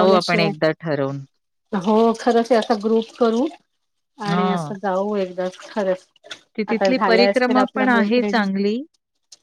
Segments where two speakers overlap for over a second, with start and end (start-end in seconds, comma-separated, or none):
6.7-8.4